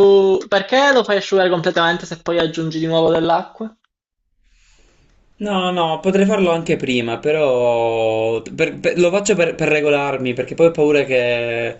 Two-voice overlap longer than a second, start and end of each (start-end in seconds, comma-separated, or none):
none